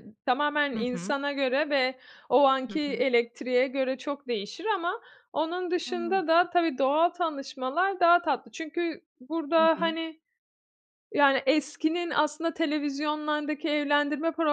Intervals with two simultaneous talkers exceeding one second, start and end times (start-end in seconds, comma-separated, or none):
none